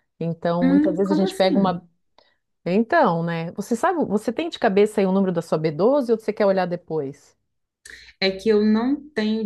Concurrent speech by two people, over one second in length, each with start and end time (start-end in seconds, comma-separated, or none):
0.6-1.8